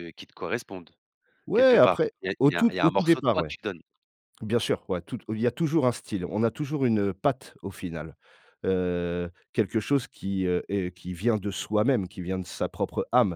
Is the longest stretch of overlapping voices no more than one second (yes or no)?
no